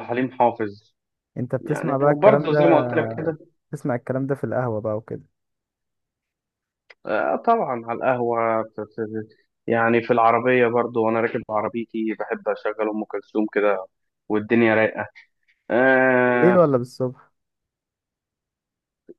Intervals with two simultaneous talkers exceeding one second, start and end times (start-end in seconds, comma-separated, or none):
1.6-2.9